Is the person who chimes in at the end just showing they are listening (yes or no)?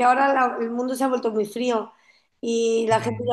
yes